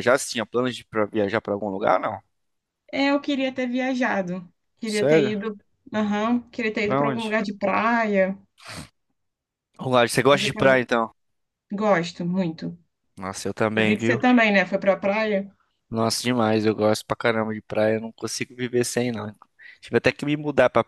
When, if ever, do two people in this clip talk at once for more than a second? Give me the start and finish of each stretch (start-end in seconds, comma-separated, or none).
none